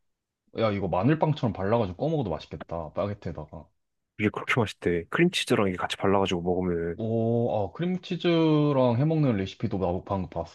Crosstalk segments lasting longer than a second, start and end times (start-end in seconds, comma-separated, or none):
none